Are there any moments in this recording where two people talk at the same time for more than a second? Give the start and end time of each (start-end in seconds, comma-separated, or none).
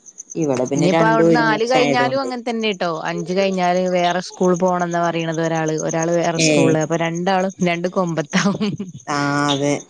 0.8-2.3